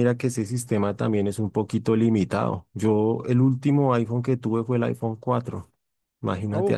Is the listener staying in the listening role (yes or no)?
yes